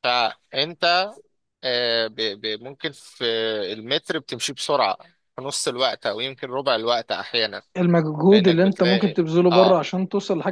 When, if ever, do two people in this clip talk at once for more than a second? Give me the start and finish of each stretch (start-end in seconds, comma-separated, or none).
8.3-9.8